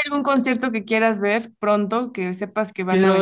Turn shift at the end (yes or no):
yes